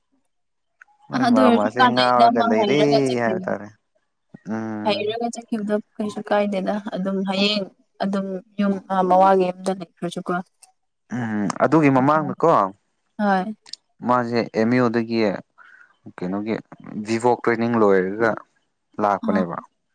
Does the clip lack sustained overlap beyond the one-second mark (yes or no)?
no